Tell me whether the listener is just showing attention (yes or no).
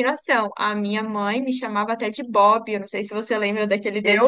no